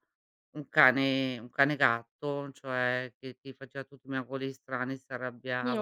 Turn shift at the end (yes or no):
no